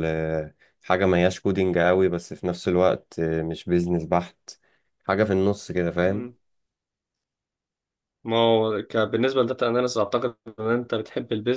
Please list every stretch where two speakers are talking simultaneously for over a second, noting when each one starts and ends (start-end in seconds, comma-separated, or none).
none